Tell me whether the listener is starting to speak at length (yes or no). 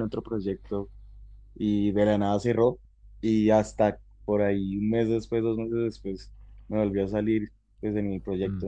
no